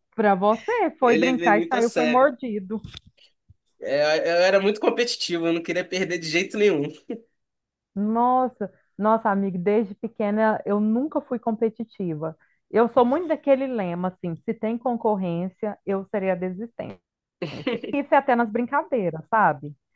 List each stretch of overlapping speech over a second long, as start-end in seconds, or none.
1.0-2.3